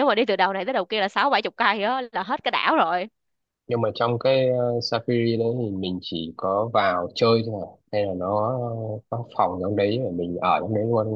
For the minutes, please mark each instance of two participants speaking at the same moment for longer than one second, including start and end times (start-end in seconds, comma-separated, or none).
none